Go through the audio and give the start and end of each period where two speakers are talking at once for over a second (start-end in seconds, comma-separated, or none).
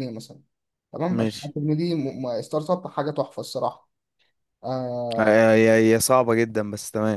none